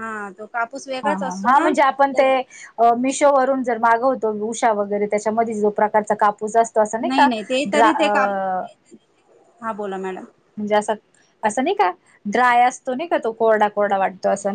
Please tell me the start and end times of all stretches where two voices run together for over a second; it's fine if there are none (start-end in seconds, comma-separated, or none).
none